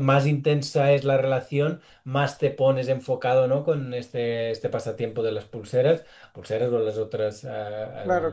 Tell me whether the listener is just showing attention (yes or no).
no